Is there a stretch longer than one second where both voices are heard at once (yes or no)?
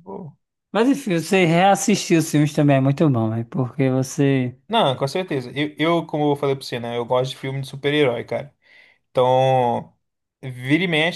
no